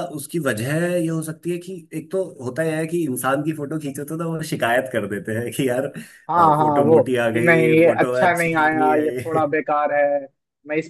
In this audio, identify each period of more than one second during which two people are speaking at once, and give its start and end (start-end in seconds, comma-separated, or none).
6.3-9.4